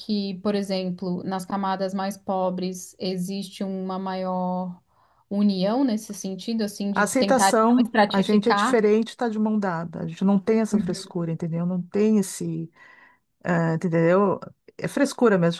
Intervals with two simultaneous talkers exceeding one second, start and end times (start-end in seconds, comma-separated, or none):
6.9-8.8